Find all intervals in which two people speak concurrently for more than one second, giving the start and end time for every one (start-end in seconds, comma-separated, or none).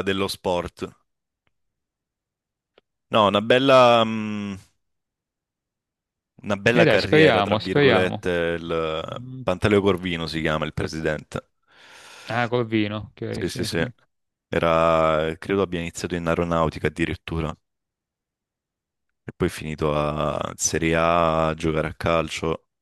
6.7-8.2